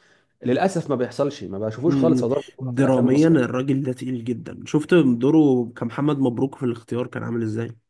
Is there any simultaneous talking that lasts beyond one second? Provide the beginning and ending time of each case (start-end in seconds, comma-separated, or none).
1.9-3.4